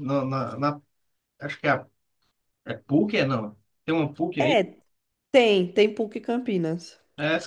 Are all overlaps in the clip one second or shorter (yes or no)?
yes